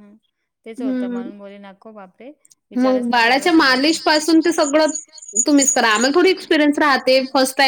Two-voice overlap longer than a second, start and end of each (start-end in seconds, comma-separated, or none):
2.8-4.5